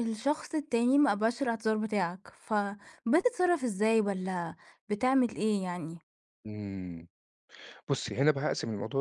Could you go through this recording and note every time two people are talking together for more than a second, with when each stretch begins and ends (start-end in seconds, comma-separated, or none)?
none